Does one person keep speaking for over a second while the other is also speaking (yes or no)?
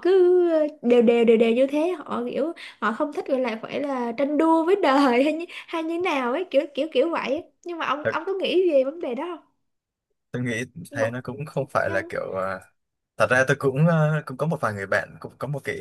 no